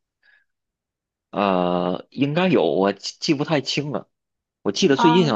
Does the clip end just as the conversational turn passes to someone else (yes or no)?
no